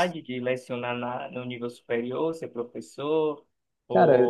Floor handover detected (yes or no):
no